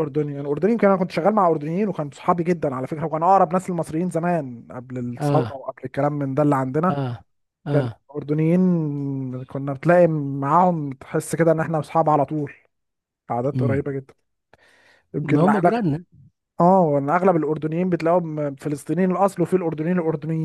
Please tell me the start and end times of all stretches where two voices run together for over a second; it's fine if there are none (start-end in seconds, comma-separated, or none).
none